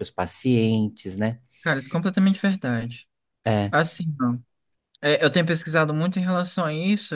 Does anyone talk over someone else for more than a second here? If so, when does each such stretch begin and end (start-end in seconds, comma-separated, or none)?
none